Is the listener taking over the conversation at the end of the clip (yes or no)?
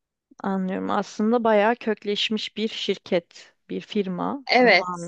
yes